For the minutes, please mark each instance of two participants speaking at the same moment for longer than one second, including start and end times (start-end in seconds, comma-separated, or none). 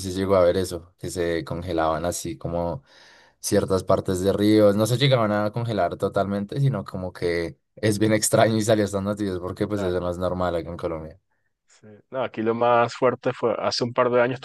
none